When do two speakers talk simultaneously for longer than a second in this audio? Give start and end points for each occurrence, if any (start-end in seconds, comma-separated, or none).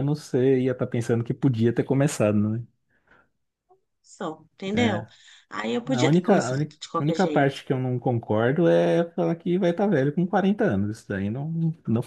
5.8-7.6